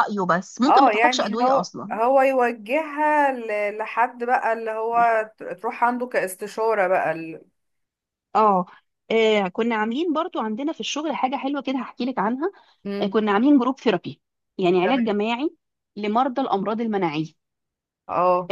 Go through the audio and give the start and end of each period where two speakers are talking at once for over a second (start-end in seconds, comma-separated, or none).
0.7-2.0